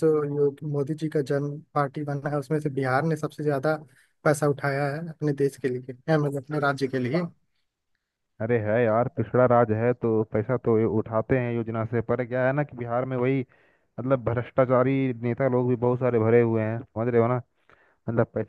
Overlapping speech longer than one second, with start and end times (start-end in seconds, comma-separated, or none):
none